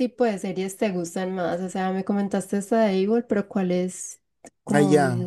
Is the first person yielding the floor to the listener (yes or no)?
yes